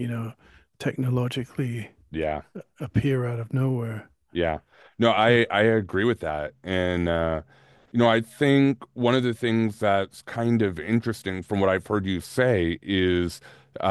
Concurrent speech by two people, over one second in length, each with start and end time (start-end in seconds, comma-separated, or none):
none